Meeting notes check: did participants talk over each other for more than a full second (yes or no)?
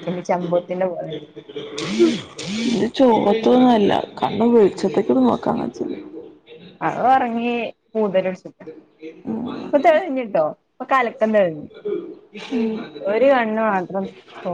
no